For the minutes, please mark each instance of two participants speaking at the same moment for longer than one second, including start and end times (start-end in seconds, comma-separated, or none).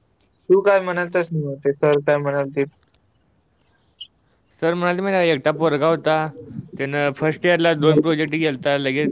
none